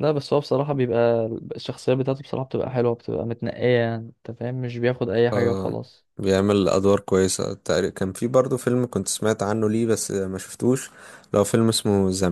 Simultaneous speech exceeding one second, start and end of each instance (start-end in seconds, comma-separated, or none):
none